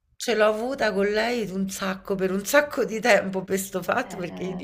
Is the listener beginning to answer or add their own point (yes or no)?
no